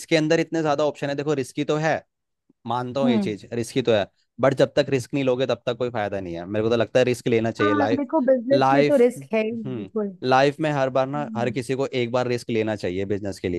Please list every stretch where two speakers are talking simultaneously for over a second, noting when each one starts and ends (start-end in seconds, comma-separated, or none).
8.5-9.9